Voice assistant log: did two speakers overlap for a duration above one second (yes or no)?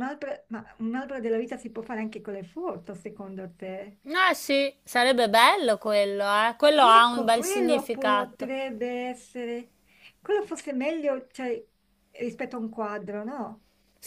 yes